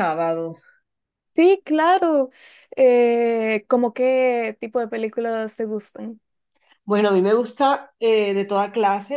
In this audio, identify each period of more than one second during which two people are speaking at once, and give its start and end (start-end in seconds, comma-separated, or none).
none